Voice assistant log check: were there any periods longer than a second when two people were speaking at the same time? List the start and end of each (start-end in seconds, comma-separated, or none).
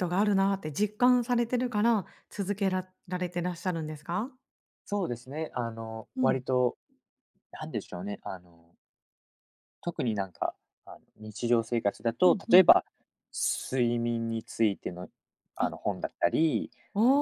none